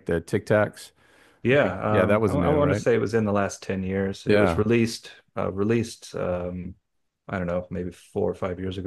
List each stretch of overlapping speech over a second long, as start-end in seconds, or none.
1.5-2.8